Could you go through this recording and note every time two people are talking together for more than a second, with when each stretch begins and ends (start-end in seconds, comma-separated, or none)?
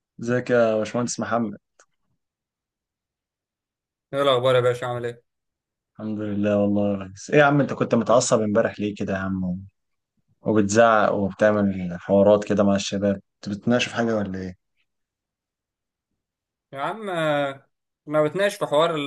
none